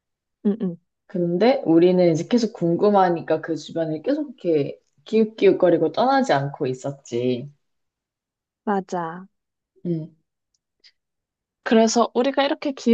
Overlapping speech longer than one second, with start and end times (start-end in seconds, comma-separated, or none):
none